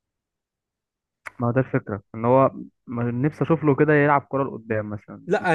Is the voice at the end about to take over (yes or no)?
yes